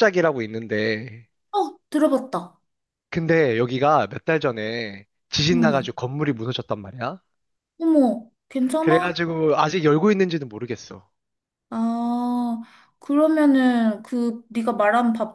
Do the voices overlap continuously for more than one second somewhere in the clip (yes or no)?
no